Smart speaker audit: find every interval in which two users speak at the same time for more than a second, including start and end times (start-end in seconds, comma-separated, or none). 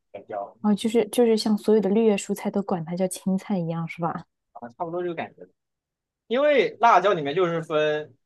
none